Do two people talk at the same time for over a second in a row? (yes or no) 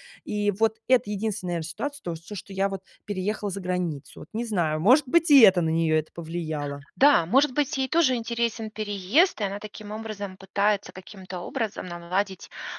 no